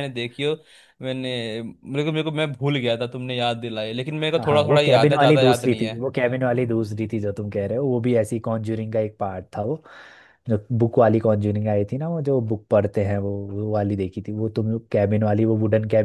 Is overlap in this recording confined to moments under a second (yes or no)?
no